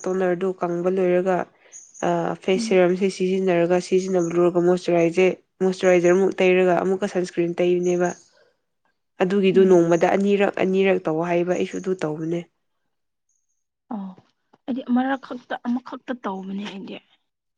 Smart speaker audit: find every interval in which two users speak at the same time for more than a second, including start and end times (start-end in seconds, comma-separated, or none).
none